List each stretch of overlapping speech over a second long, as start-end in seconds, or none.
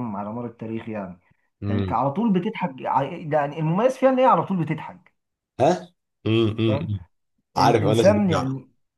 none